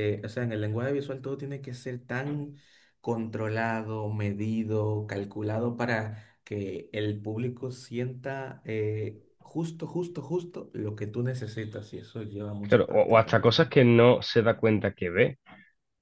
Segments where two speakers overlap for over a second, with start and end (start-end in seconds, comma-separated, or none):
12.6-13.8